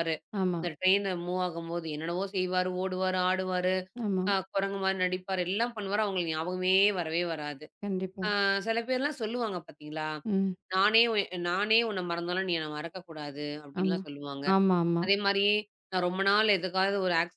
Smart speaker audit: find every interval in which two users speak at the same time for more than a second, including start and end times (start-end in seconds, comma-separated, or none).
none